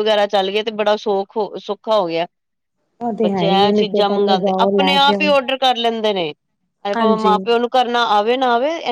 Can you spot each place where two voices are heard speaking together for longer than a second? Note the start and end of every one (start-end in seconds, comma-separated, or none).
3.2-5.3